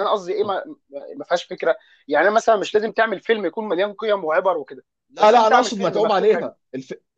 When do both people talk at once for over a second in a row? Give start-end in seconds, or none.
5.2-6.5